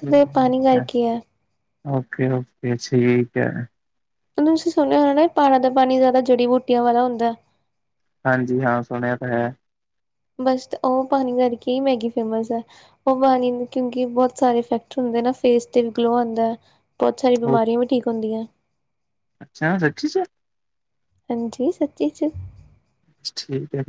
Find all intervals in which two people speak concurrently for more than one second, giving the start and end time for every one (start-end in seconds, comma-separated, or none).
none